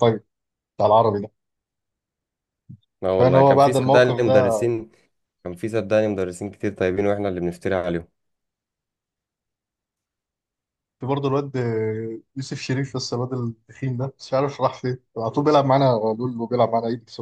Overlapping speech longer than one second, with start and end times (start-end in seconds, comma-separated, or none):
3.1-4.5